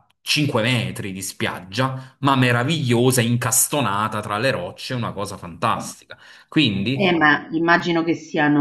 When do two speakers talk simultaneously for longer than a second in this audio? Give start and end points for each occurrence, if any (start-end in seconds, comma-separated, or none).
none